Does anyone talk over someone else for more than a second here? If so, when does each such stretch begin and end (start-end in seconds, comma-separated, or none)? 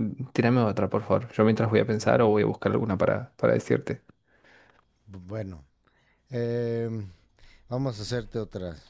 none